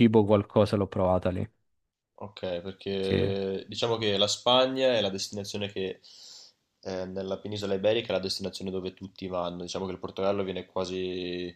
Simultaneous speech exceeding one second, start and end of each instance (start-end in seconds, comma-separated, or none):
none